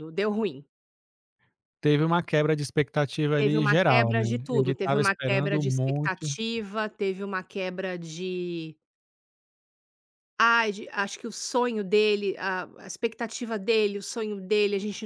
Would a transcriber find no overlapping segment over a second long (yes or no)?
no